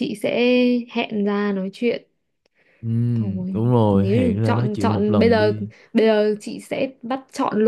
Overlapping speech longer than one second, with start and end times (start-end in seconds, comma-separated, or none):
3.1-5.5